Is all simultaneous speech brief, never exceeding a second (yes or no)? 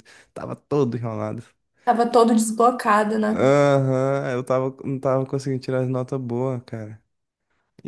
yes